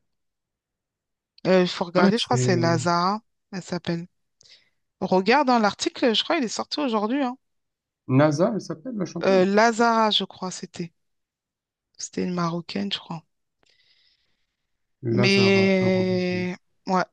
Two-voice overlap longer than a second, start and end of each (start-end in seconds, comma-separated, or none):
15.2-16.4